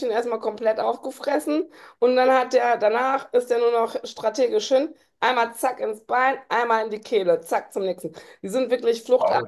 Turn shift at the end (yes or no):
no